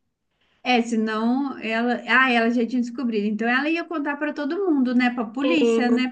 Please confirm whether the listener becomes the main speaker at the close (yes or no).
yes